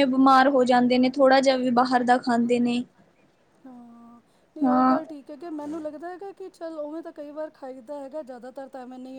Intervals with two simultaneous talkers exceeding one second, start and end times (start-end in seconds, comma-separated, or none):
none